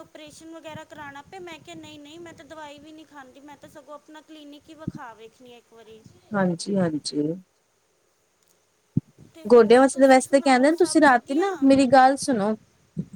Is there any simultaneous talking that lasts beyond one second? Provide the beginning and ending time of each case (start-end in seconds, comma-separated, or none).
9.5-11.5